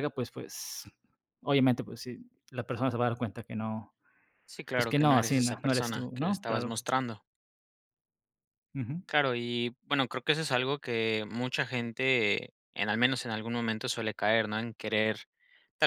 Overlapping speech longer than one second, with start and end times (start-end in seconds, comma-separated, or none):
4.8-6.8